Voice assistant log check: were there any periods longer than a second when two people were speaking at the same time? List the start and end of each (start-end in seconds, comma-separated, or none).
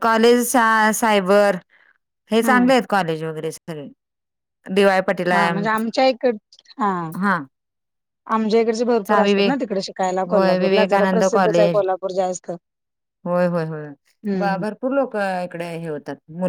10.3-11.8